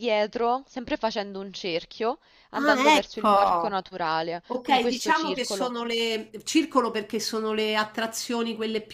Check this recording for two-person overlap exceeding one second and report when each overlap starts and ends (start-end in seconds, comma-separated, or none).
2.5-3.8, 4.5-5.7